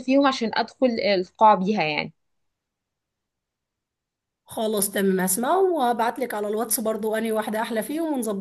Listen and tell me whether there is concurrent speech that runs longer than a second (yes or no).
no